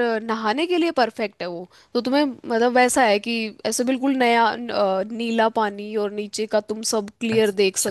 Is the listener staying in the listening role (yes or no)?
no